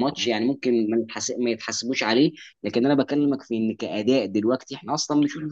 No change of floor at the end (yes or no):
no